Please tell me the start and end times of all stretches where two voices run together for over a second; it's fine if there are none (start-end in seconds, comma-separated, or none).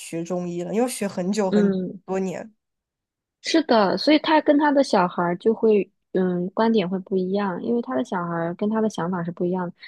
none